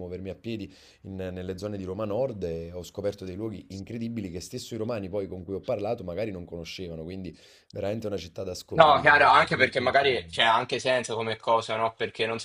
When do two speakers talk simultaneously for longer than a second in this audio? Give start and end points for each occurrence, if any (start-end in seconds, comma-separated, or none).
8.7-10.4